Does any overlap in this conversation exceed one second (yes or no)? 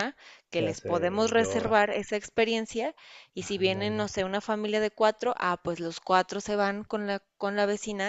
yes